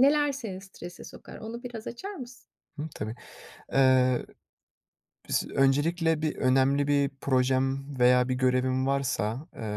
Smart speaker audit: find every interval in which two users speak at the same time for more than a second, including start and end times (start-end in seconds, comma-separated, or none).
none